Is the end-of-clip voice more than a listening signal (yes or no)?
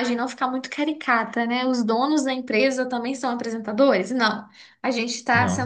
no